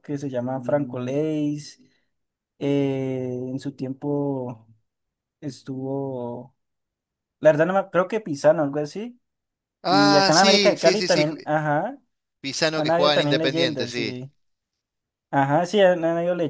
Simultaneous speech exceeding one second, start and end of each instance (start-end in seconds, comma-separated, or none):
9.9-11.2, 12.7-14.2